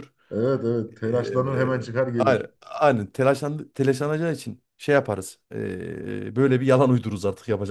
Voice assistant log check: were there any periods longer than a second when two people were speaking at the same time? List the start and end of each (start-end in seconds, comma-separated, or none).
1.1-2.5